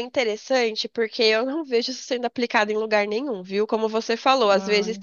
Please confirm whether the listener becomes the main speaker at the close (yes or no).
no